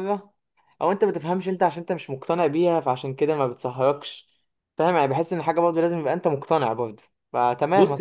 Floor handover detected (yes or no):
yes